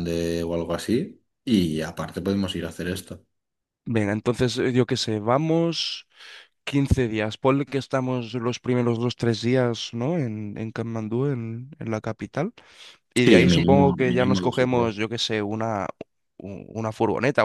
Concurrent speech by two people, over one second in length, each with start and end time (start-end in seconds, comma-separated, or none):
13.2-15.0